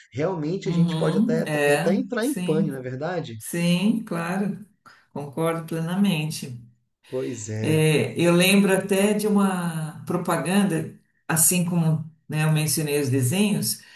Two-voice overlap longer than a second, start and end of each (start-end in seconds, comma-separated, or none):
0.6-2.7